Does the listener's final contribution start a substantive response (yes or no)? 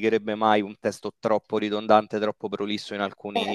no